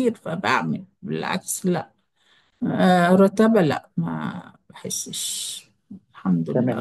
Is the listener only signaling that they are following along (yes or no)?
no